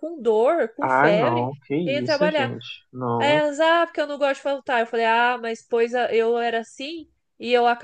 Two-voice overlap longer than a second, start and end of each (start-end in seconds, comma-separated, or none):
0.8-2.5